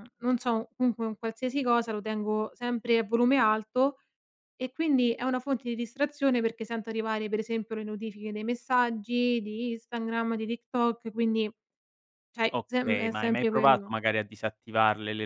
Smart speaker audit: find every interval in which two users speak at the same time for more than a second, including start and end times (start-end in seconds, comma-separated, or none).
12.5-13.9